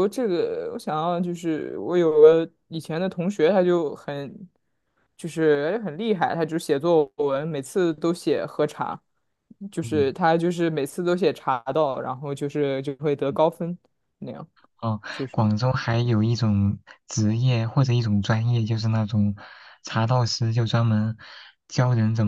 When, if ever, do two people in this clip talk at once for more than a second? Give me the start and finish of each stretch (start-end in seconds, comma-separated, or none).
none